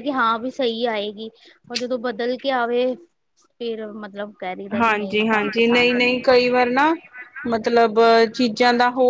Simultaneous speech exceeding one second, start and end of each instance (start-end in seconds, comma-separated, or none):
4.8-6.2